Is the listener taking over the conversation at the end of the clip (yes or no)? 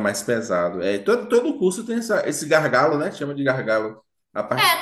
yes